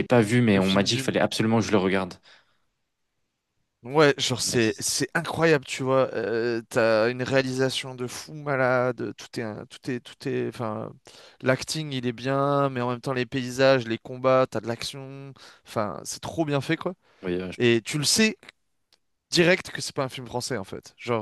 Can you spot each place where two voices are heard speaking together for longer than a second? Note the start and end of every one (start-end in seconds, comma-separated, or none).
none